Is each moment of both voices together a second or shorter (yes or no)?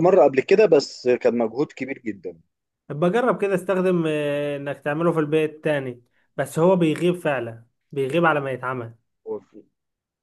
yes